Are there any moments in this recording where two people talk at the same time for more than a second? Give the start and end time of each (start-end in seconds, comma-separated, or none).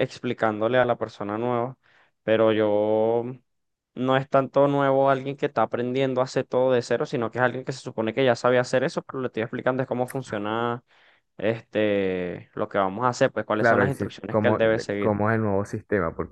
13.6-15.1